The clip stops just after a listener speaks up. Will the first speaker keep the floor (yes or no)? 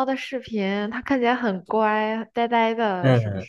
no